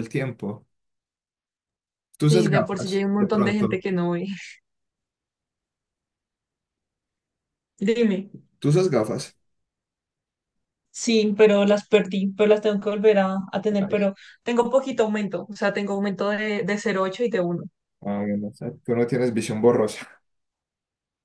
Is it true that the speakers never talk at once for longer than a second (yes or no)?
no